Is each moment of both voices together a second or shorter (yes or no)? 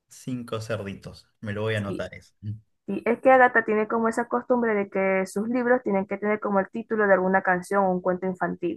yes